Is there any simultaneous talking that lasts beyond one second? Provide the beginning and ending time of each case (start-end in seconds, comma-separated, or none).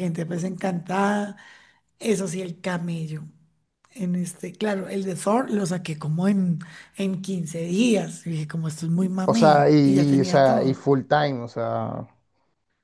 9.2-10.9